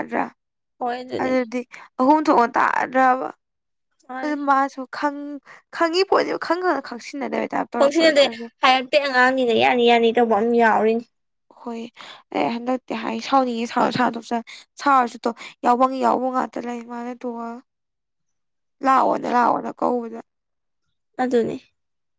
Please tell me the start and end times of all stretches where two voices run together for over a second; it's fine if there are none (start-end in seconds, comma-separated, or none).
none